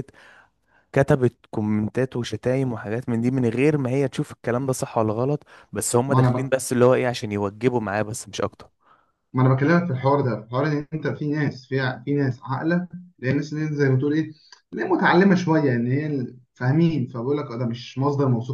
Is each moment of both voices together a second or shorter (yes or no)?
yes